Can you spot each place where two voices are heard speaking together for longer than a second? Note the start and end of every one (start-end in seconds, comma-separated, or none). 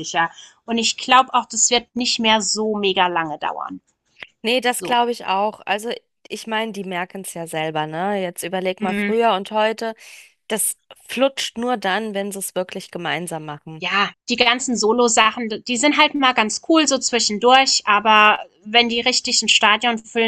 none